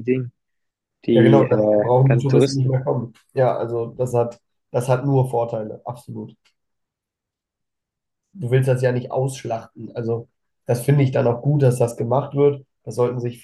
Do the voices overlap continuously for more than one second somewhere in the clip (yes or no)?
yes